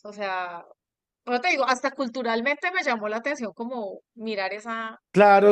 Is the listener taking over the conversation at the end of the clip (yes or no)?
yes